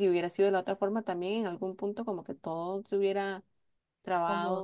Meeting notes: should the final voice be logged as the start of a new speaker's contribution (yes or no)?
no